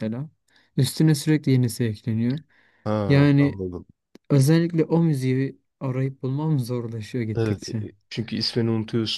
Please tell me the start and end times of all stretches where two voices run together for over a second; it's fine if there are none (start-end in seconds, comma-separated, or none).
none